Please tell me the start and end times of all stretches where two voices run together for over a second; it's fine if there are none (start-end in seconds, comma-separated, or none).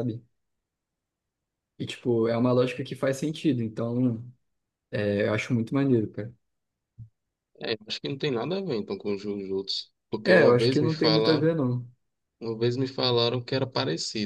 10.2-11.6